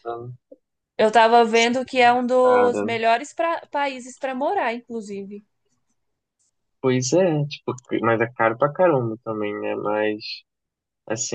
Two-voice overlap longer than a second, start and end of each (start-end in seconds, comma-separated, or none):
none